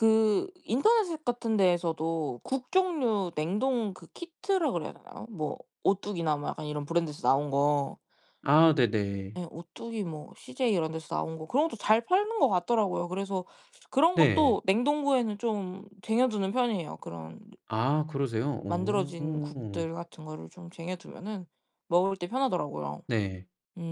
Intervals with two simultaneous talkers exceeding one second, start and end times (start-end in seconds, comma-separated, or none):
18.7-19.9